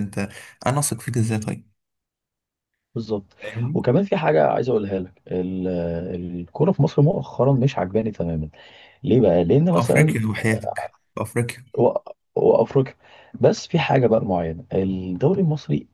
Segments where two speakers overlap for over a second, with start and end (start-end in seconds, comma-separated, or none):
none